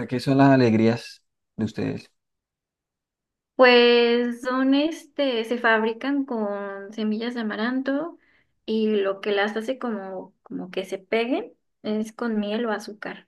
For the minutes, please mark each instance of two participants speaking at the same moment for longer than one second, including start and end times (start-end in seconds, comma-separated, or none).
none